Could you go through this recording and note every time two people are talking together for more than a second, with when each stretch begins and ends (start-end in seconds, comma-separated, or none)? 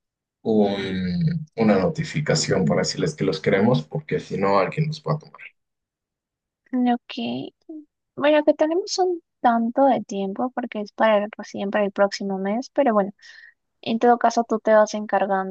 none